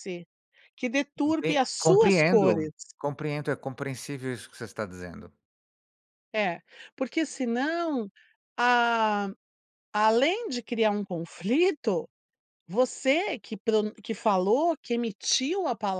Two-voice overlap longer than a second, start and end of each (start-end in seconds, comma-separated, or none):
1.2-2.7